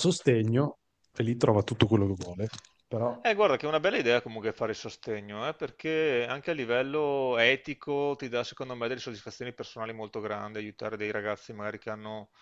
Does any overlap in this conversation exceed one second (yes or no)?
no